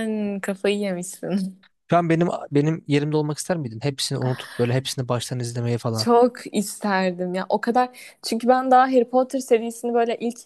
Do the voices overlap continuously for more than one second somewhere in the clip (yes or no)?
no